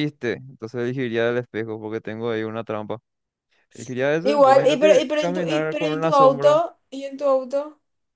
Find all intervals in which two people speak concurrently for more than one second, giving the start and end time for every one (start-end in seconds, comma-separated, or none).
4.2-6.6